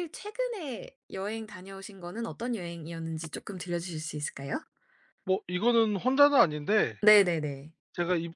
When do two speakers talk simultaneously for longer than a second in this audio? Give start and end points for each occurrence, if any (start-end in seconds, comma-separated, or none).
none